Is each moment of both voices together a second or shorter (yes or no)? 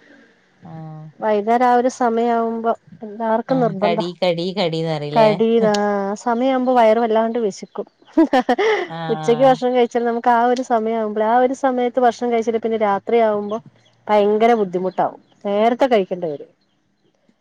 yes